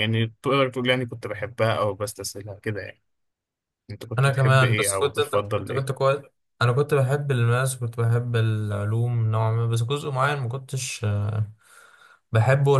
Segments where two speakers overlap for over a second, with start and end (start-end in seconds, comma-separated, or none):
4.2-5.9